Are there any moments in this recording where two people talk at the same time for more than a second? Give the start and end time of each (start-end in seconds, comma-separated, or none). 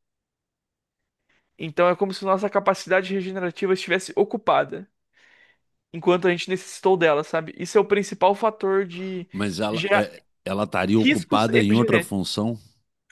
11.0-12.2